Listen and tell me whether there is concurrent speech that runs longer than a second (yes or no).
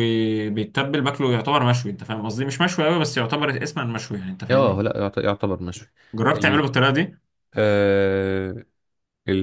no